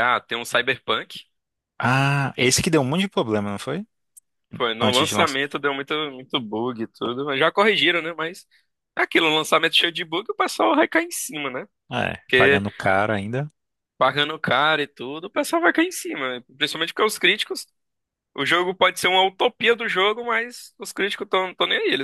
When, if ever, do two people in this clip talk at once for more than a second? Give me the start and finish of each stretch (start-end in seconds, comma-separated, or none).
none